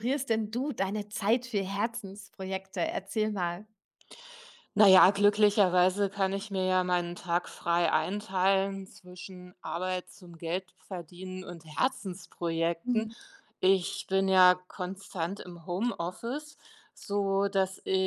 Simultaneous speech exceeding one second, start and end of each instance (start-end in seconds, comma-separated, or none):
none